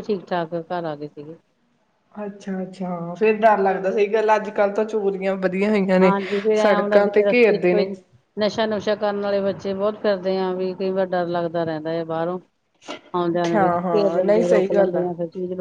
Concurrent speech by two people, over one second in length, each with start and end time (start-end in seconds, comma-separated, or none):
13.5-15.0